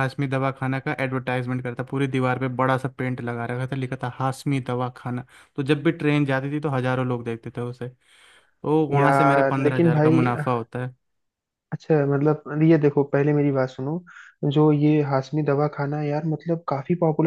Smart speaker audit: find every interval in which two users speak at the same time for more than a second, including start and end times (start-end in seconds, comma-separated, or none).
8.9-10.2